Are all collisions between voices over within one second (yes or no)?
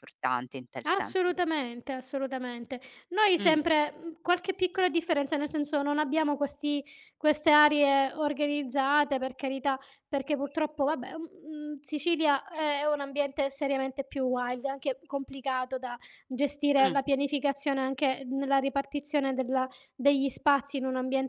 yes